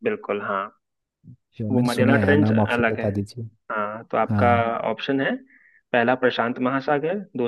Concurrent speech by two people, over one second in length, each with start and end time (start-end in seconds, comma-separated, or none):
1.7-3.0